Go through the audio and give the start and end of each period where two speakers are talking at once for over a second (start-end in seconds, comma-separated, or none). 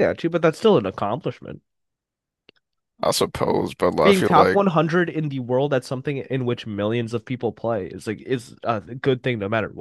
none